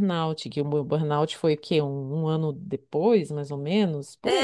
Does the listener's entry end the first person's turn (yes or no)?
yes